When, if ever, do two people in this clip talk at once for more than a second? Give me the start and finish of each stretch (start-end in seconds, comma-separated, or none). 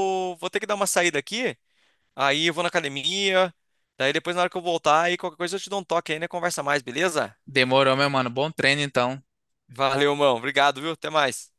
none